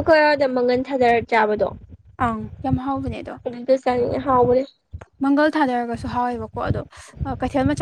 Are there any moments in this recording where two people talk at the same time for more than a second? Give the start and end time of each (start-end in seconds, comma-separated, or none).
none